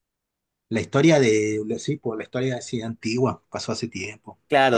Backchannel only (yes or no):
no